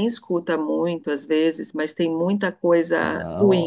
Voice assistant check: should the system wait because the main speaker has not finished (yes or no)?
no